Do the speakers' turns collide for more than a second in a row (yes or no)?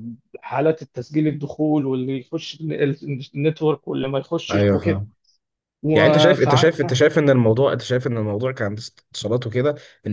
no